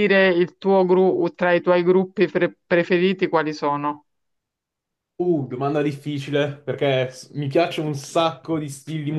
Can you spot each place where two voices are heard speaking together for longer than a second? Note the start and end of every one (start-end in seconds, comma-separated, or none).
none